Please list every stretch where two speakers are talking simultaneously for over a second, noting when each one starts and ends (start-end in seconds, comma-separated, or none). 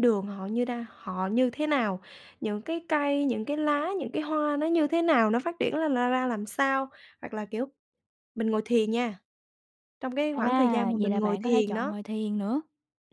10.3-11.9